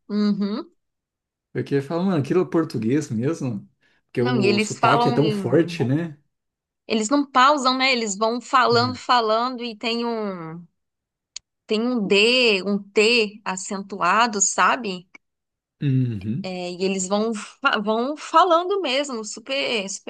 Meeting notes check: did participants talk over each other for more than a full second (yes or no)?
yes